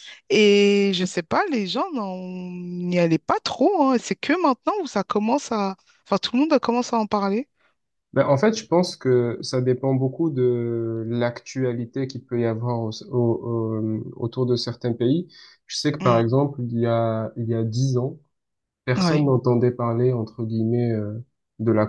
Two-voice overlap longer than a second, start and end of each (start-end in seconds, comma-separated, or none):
none